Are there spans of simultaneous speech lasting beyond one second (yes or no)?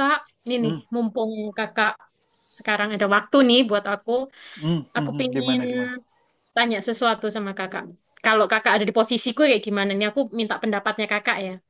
no